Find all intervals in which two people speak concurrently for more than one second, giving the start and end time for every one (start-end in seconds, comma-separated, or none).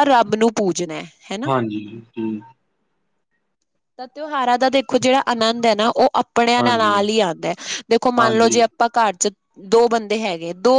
none